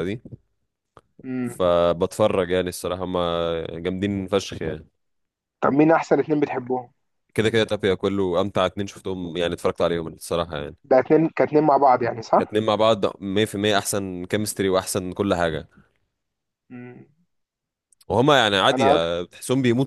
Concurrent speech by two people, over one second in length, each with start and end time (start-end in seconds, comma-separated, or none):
none